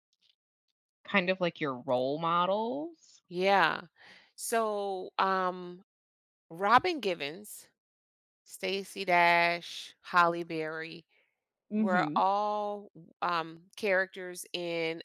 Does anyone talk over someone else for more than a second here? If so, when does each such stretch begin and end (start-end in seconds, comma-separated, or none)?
none